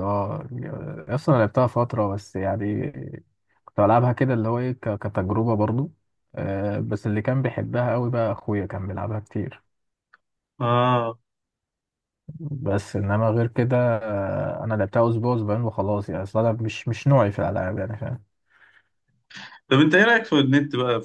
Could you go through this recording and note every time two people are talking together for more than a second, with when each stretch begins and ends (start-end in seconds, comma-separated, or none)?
none